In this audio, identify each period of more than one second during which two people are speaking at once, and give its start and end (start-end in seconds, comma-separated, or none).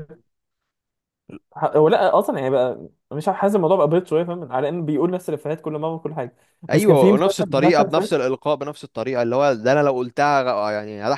6.7-8.2